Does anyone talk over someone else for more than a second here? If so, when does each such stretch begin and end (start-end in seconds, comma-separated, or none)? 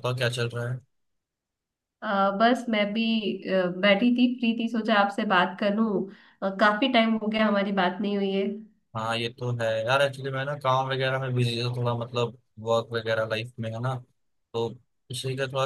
none